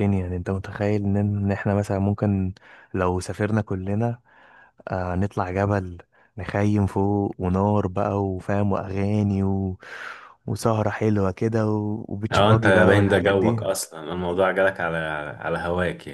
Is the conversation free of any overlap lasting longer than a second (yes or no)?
no